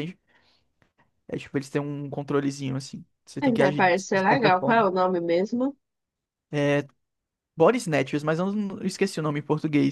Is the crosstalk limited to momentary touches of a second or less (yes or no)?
no